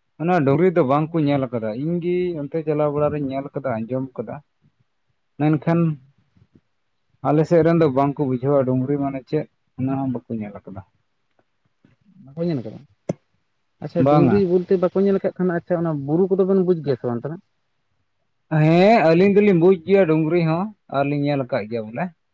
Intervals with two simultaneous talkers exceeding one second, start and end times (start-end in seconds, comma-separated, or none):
none